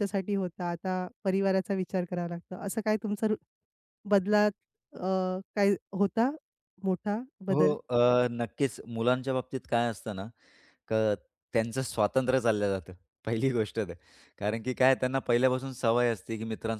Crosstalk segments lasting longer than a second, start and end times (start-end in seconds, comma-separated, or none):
none